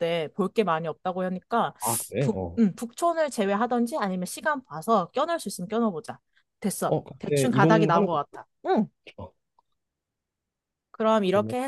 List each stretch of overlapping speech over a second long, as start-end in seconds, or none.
6.9-8.2